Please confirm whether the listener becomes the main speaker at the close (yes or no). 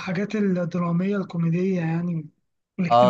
yes